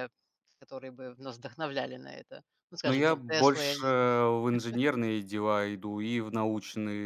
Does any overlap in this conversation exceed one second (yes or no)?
yes